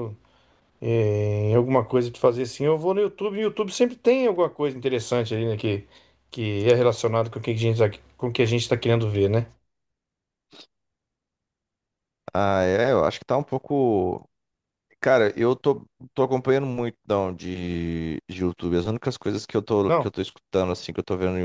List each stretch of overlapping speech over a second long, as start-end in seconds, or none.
none